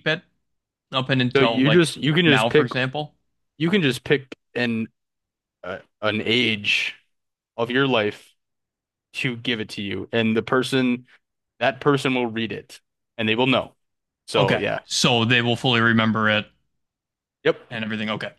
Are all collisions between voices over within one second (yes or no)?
no